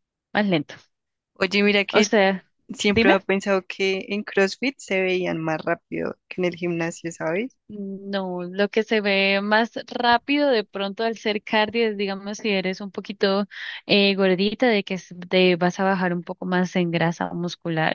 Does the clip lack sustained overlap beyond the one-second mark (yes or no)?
yes